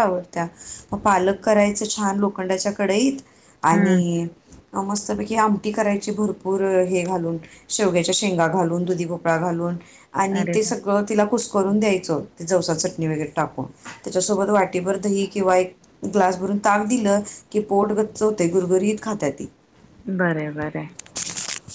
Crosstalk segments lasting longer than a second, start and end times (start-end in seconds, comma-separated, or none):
none